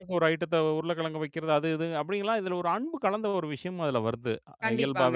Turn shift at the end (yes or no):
yes